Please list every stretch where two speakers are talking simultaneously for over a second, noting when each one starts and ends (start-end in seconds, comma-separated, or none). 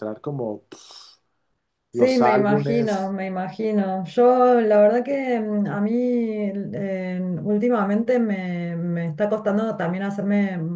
1.9-3.1